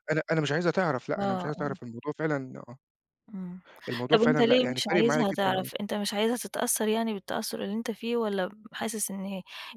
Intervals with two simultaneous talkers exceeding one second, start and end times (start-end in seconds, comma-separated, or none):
4.1-5.7